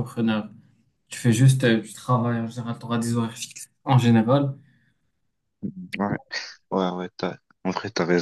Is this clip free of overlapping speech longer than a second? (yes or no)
yes